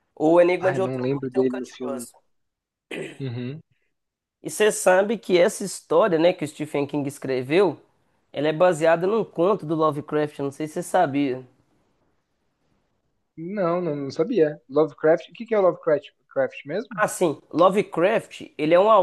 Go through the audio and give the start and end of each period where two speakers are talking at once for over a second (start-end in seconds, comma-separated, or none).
0.6-2.1